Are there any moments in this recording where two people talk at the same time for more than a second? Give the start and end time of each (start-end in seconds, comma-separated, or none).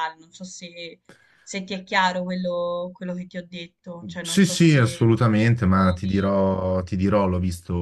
4.2-6.3